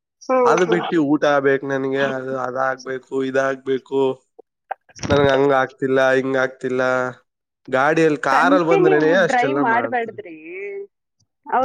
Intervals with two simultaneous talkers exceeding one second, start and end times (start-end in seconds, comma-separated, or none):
8.3-10.2